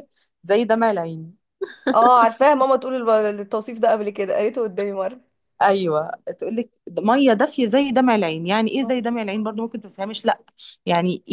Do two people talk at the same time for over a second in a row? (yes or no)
no